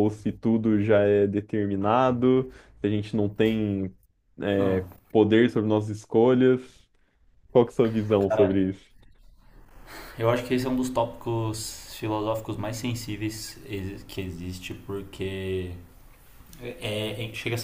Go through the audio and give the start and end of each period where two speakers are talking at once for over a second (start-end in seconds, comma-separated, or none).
none